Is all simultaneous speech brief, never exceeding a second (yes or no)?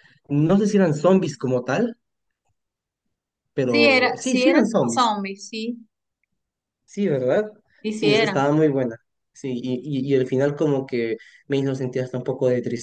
no